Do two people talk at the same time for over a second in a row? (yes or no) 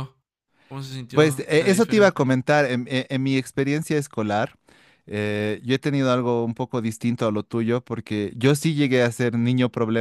yes